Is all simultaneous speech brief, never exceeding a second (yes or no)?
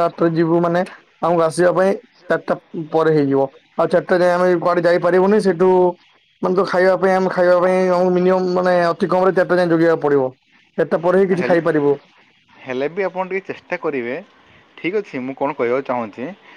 yes